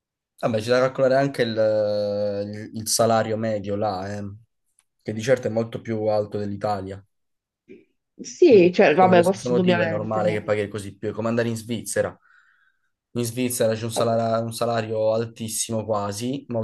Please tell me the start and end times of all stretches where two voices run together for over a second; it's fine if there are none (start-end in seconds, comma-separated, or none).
8.5-10.6